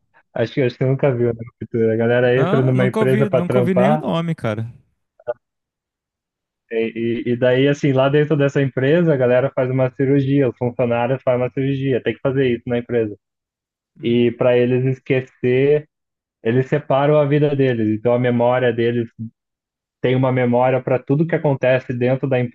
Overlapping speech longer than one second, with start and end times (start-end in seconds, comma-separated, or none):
2.4-4.0